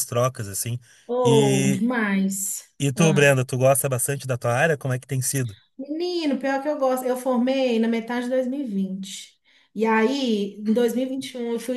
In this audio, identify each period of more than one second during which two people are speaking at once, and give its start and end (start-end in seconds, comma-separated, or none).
none